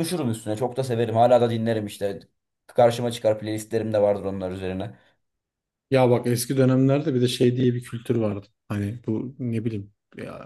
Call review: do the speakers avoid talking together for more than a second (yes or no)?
yes